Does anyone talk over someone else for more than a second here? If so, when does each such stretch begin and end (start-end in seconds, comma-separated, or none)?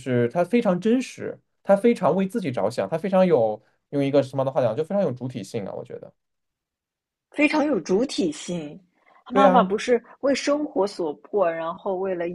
none